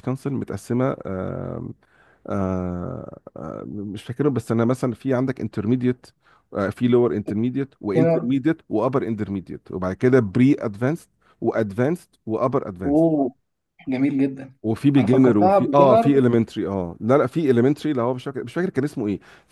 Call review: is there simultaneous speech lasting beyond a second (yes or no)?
yes